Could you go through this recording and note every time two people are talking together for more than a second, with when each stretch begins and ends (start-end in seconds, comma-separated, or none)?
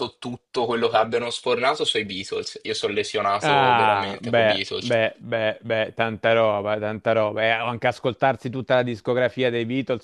3.4-4.9